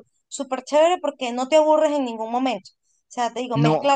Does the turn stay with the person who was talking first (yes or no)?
yes